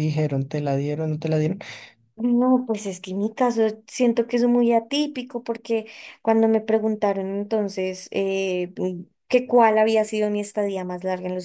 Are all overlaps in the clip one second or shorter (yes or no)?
yes